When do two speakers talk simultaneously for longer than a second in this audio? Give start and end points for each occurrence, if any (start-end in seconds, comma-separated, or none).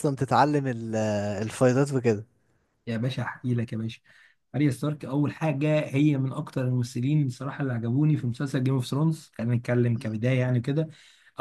none